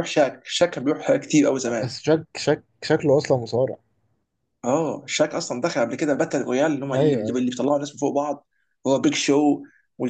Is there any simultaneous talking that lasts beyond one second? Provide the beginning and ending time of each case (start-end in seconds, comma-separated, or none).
none